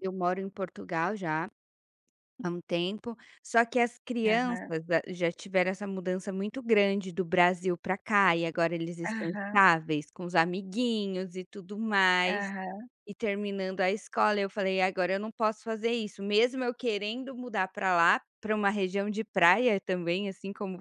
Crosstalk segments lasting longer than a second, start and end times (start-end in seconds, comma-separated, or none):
none